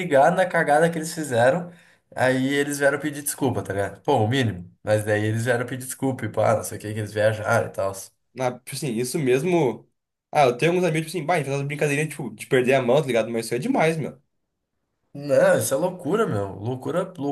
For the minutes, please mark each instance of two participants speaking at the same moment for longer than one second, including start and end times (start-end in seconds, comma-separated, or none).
none